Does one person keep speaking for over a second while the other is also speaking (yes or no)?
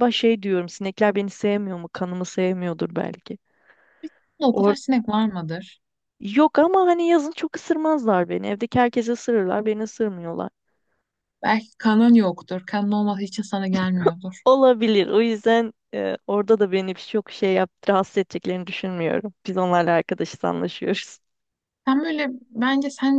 no